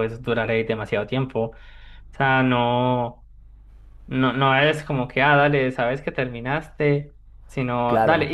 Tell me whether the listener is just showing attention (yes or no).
yes